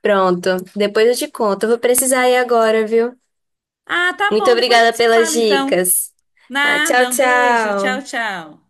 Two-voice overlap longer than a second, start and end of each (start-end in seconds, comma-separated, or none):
4.3-5.8, 6.6-8.1